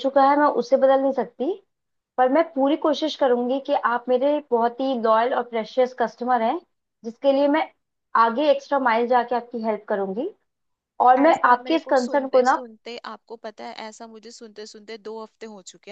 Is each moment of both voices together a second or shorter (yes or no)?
no